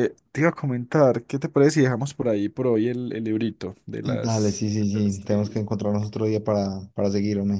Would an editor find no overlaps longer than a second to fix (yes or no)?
no